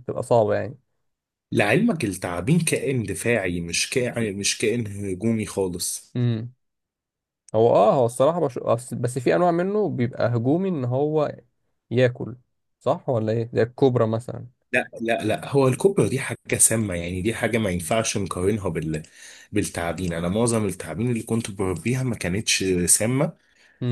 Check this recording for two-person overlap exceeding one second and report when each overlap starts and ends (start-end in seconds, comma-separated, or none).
none